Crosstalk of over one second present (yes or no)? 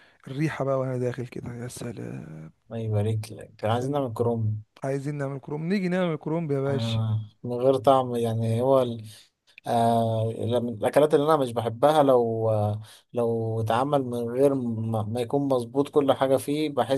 no